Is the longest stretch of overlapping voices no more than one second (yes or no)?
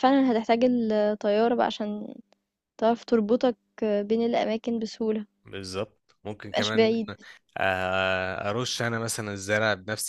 yes